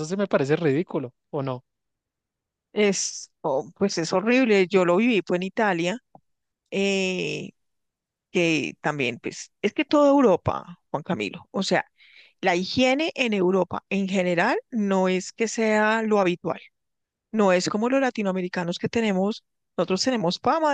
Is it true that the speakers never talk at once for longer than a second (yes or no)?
yes